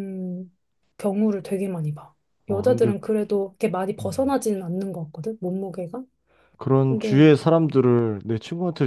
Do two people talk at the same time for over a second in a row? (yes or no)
no